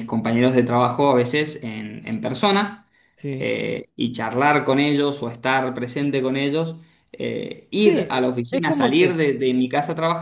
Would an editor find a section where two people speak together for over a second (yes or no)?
yes